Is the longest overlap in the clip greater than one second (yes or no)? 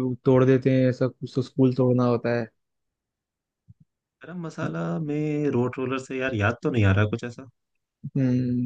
no